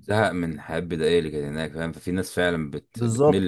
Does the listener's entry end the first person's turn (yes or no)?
yes